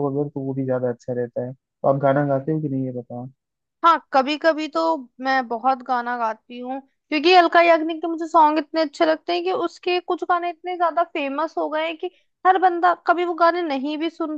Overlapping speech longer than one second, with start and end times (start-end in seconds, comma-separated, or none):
none